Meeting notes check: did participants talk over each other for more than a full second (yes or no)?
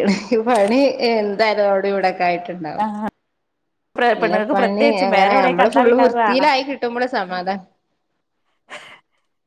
yes